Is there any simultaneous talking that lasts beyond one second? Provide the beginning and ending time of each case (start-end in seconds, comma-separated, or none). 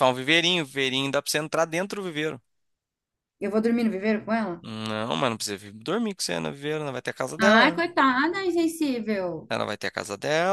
none